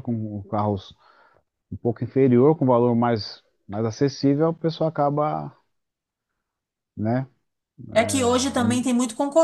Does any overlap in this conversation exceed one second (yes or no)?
no